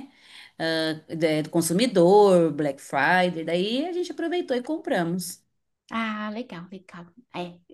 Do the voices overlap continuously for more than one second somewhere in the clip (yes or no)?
no